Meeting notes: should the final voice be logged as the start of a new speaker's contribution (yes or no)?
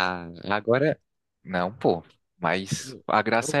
no